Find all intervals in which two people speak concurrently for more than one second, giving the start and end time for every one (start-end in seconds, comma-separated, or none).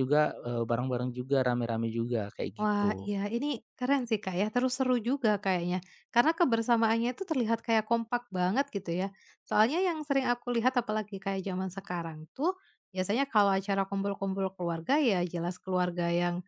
none